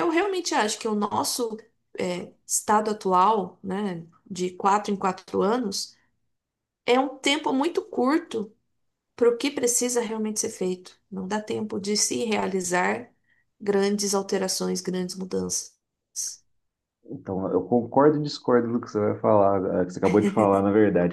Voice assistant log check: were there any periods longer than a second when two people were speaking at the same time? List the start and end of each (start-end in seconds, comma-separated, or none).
none